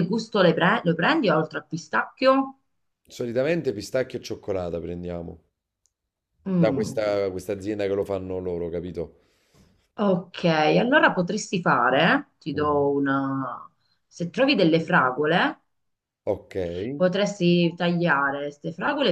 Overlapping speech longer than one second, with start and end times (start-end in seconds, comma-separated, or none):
none